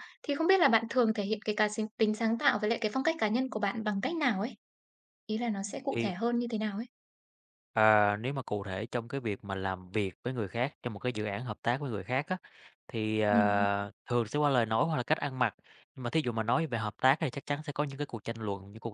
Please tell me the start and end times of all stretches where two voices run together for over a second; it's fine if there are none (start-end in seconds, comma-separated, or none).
none